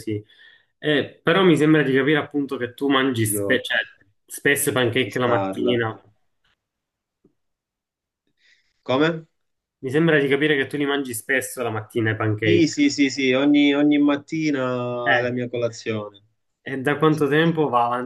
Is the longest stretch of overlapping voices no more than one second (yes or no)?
no